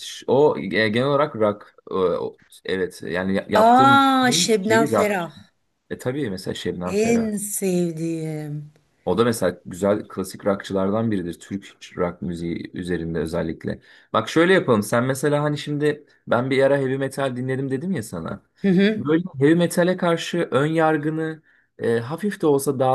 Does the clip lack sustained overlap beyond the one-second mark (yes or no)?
no